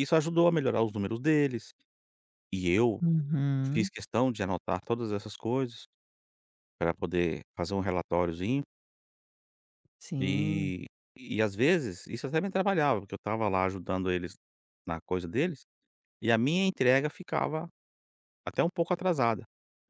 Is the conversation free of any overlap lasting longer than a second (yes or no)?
yes